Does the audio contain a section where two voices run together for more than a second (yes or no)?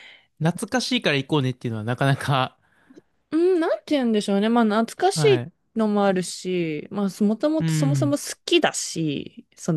no